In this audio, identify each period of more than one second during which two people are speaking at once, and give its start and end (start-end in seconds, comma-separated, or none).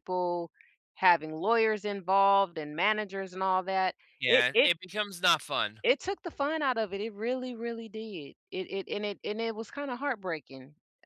none